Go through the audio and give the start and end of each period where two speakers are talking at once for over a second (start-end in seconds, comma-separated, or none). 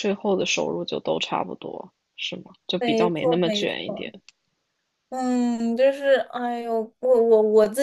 2.8-4.2